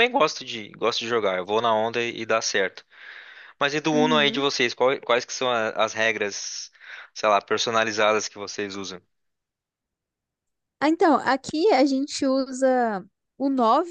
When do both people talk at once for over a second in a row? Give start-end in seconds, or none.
none